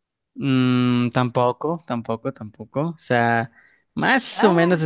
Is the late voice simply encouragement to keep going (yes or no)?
yes